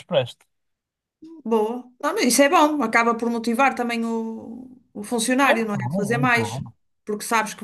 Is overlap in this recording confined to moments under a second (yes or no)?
no